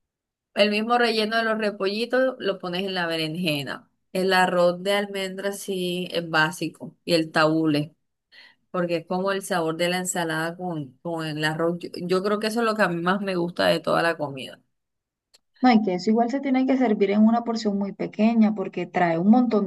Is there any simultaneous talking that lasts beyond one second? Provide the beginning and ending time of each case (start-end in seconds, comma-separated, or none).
none